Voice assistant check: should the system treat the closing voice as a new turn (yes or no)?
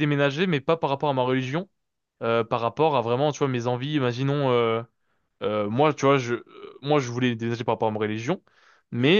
no